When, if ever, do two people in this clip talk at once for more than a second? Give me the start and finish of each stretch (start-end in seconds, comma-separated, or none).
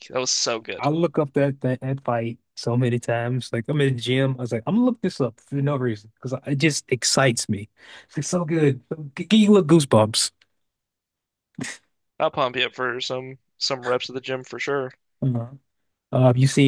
none